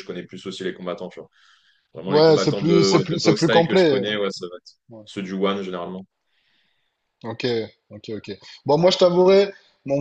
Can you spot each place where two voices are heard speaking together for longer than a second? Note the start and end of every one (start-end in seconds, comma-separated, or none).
2.1-4.1